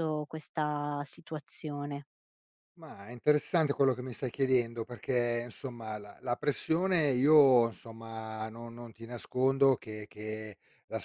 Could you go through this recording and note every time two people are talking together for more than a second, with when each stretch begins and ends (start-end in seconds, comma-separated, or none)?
none